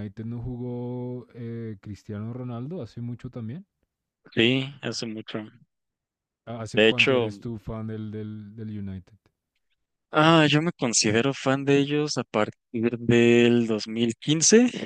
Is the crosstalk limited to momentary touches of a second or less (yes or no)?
yes